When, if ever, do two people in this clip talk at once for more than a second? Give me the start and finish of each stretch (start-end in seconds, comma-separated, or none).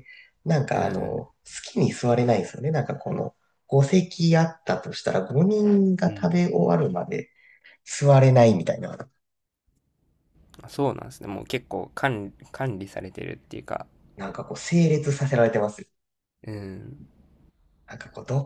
none